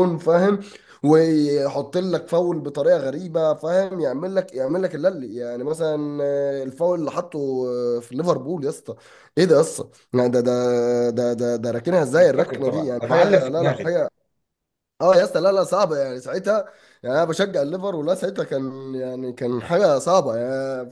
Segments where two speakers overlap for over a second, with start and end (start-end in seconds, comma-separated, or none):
12.2-13.9